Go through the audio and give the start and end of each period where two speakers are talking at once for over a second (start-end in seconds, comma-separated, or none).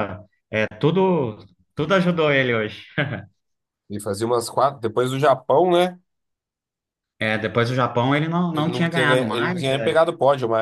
8.5-9.9